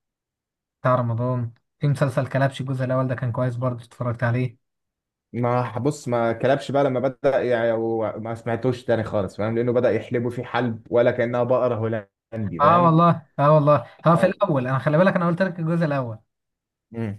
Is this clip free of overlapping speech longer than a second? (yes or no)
yes